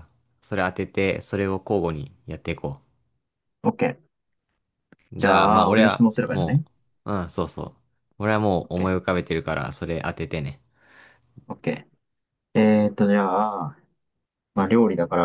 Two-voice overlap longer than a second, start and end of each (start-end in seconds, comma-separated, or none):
5.2-6.6